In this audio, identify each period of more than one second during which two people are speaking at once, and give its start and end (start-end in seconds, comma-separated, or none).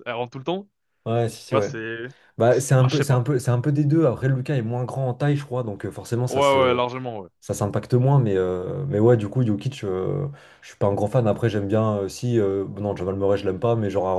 none